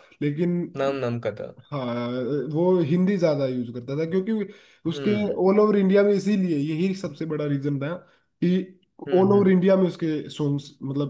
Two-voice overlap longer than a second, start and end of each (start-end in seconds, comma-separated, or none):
none